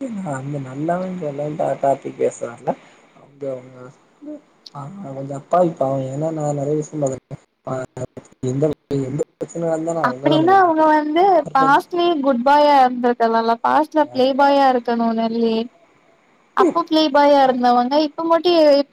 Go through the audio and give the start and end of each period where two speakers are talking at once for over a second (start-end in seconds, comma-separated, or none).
10.1-11.8